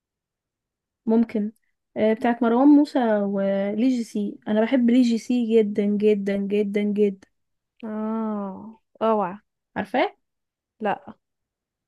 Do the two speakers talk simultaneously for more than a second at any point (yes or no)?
no